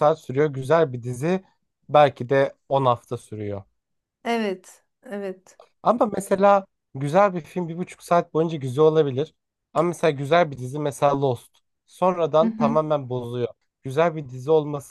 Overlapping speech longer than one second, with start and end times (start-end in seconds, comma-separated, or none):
none